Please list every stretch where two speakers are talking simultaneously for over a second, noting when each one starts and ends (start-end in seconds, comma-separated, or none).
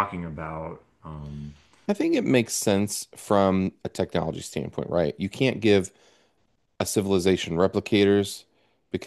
none